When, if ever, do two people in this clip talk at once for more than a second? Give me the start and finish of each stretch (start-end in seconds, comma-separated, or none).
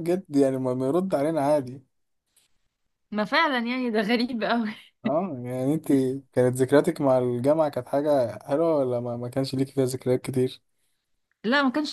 none